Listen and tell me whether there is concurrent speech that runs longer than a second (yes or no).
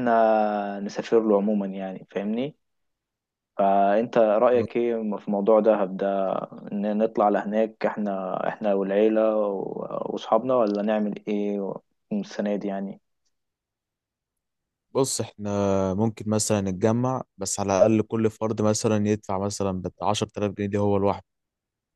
no